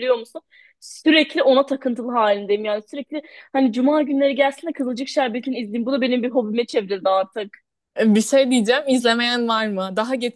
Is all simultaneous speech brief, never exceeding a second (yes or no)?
yes